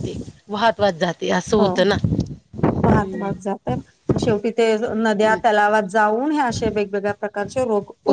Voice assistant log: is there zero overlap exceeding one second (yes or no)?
yes